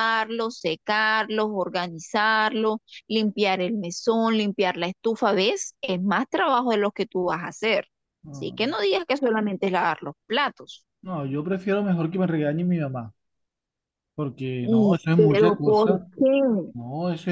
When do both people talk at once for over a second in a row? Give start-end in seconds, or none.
14.6-16.0